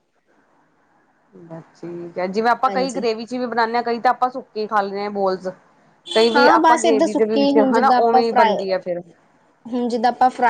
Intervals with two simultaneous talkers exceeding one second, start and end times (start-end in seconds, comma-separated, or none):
6.3-8.6